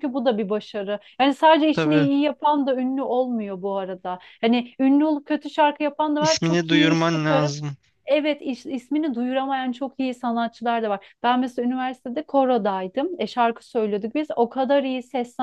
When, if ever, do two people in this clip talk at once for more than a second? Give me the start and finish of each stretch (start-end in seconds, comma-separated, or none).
6.2-7.5